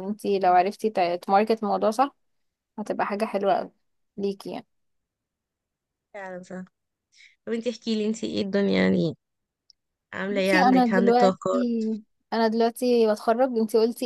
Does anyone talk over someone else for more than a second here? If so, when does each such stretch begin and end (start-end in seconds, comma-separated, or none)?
10.3-11.6